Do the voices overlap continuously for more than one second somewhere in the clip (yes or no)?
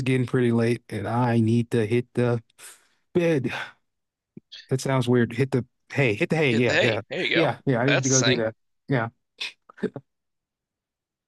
yes